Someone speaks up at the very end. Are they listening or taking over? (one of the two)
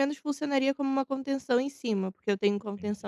listening